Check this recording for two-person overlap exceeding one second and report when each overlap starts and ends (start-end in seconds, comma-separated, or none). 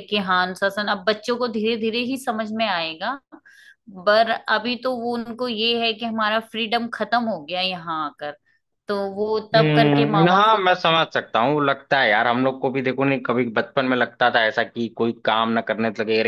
9.6-11.1